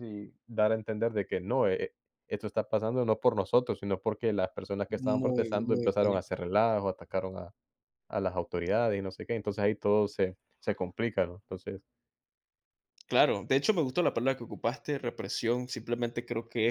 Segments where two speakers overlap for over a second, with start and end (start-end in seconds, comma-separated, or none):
4.9-6.2